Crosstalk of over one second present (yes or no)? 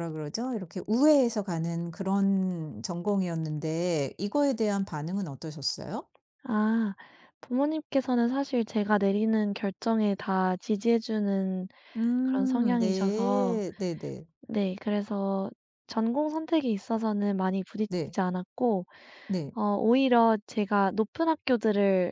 yes